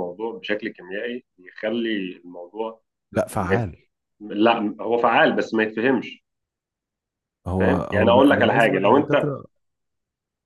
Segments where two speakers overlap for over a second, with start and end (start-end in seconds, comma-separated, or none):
7.6-9.3